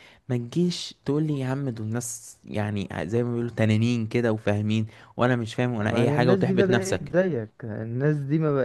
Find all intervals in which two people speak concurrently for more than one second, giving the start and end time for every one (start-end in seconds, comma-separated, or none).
5.8-7.1